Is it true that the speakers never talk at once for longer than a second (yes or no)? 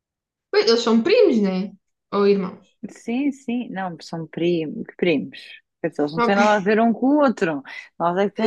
yes